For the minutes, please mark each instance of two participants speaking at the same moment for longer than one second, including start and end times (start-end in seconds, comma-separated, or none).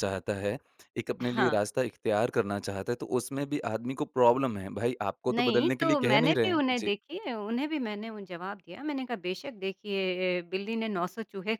5.3-6.9